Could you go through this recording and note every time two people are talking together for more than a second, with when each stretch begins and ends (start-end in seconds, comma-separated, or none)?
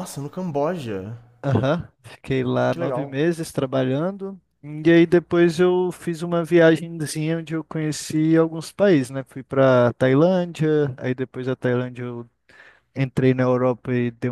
none